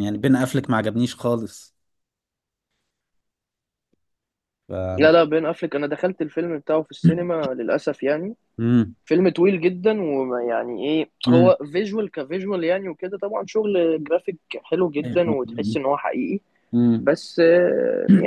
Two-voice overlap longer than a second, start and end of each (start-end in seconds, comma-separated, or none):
none